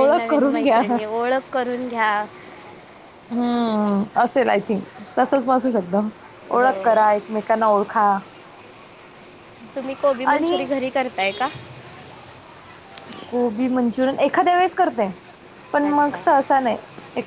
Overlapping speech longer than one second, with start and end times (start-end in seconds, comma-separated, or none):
none